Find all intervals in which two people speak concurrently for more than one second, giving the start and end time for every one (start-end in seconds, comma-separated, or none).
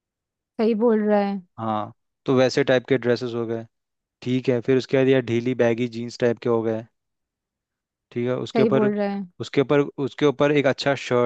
none